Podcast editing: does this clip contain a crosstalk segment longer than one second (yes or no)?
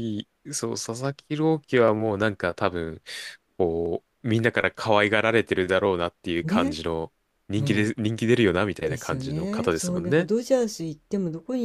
yes